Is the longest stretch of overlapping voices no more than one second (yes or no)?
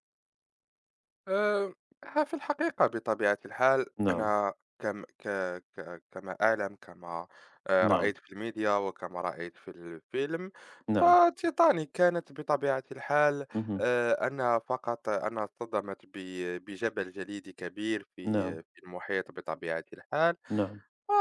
yes